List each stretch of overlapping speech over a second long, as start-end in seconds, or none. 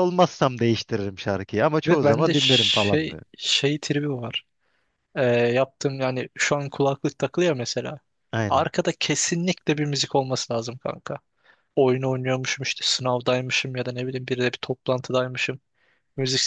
1.9-3.2